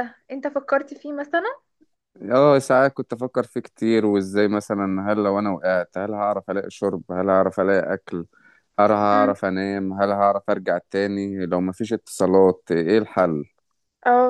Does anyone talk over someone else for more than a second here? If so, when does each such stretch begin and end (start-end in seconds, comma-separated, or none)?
none